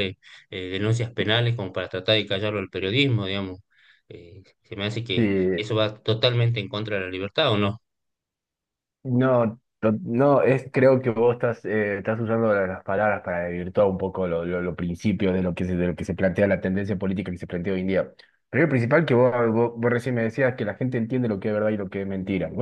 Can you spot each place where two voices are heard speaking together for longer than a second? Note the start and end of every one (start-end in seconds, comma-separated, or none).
none